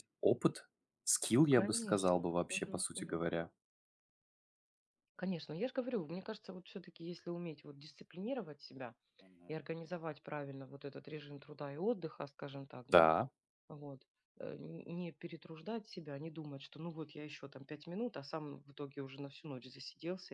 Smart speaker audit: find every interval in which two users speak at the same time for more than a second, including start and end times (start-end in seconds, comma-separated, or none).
1.5-3.2